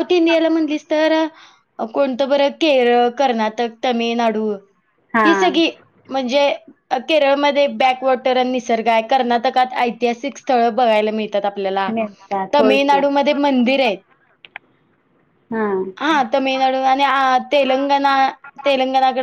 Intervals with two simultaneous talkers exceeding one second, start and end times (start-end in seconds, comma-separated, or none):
none